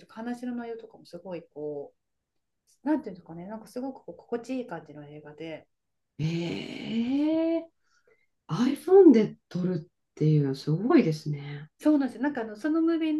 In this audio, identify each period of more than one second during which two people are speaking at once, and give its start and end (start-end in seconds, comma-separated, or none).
none